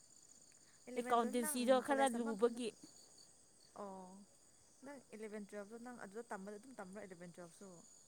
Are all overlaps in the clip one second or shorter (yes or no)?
no